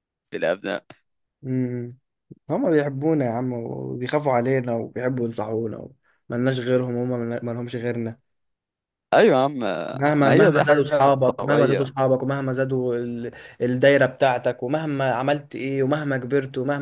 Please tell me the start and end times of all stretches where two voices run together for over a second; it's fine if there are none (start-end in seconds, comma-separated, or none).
10.2-11.8